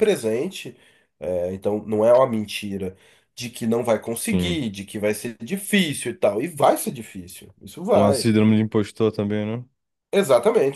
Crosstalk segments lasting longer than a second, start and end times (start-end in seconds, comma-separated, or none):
none